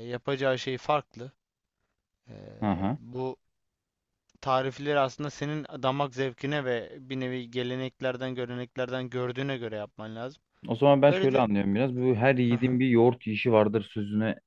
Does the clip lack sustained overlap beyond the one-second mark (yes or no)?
yes